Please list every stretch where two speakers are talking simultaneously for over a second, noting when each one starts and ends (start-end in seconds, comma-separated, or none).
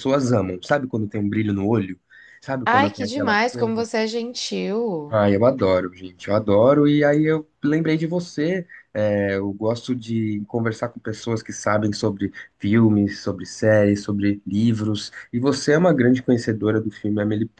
2.6-3.9